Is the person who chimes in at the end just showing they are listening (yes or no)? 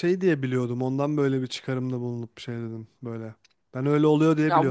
no